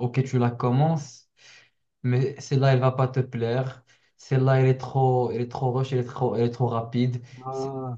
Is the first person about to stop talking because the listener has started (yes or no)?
no